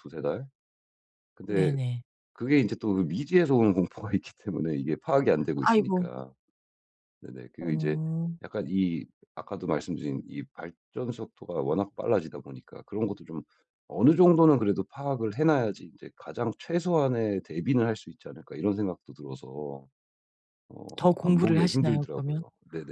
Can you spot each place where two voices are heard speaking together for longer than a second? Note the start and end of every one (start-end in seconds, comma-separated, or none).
21.0-22.4